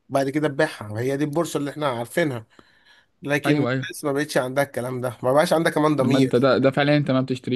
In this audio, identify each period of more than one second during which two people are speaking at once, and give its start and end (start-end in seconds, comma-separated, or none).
none